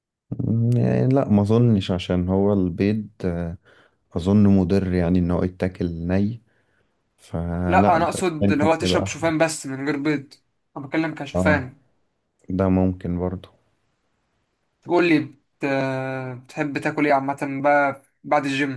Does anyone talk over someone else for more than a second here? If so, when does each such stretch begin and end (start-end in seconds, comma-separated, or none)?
7.7-9.3